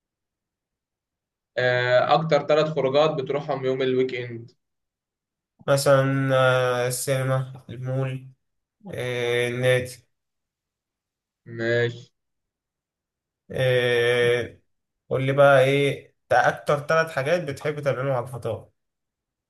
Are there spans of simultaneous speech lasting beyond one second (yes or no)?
no